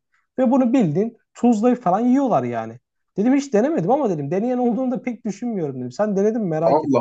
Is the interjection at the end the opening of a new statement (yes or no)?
yes